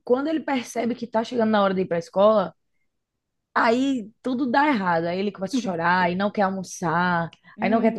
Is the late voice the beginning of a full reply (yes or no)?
no